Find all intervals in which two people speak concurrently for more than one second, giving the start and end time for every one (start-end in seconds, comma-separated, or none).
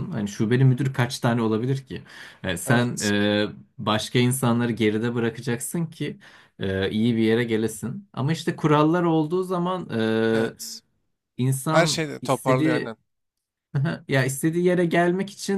11.7-12.9